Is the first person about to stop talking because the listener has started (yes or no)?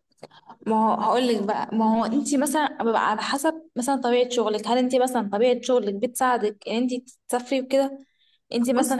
yes